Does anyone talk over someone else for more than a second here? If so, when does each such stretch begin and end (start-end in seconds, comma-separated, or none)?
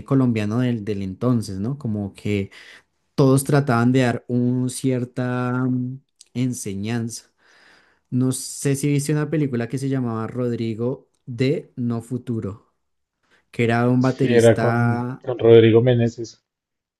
14.0-15.2